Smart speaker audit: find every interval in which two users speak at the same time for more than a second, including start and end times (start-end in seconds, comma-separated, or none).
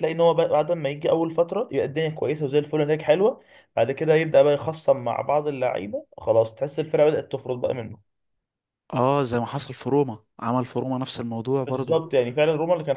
none